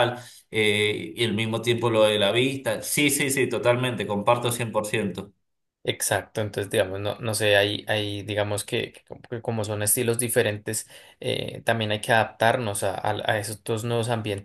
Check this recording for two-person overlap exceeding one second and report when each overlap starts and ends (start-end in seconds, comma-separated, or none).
none